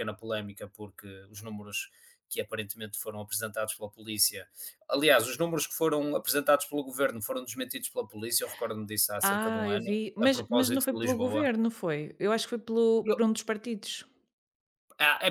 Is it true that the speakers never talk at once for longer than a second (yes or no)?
no